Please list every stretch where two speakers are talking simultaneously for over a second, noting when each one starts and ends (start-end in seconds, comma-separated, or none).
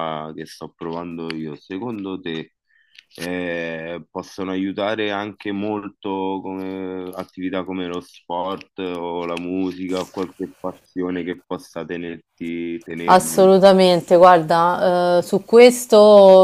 none